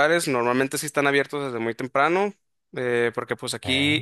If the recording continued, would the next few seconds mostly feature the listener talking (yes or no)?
no